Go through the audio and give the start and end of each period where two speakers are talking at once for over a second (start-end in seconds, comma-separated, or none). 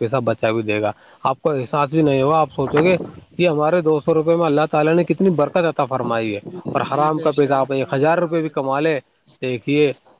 6.9-8.9